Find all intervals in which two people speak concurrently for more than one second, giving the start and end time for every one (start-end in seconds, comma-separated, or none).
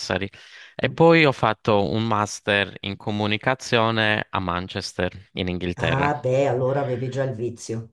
none